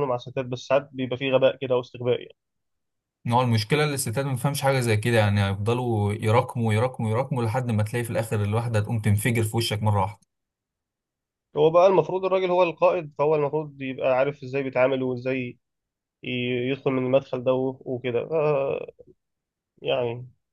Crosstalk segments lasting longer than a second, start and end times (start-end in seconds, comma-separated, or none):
none